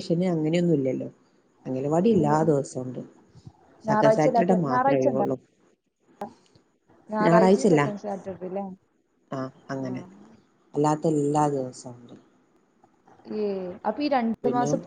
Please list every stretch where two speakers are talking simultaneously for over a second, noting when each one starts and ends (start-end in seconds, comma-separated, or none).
3.9-5.2